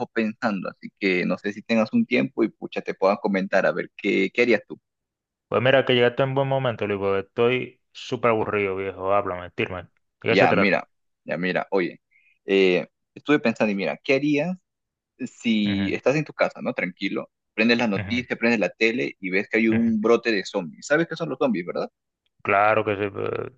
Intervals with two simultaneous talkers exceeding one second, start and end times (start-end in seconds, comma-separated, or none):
none